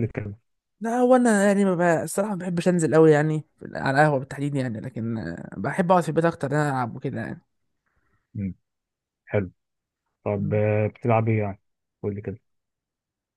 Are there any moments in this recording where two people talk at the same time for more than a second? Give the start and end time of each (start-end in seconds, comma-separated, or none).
none